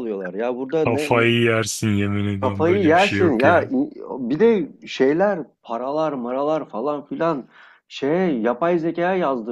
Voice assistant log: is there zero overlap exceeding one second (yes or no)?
no